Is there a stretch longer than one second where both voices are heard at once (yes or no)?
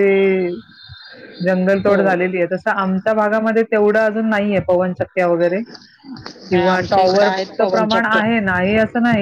yes